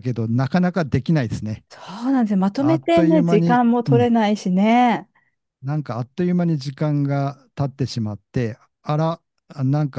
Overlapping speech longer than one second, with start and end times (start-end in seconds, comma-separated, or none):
2.6-4.1